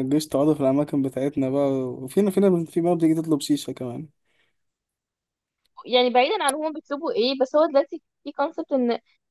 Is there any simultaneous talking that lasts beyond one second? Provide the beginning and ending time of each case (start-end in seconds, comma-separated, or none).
none